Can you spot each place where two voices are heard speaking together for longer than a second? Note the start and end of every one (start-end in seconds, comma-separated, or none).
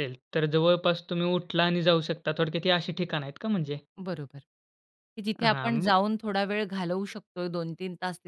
none